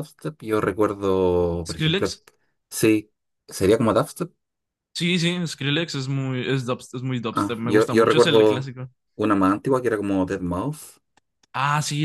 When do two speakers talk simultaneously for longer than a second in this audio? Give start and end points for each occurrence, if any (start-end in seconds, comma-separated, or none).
7.3-8.7